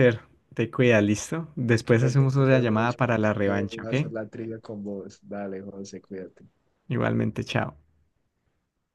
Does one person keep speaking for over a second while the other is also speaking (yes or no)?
yes